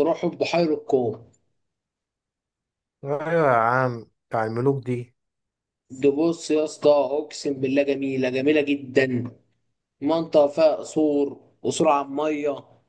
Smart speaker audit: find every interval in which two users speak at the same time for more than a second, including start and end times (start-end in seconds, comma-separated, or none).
none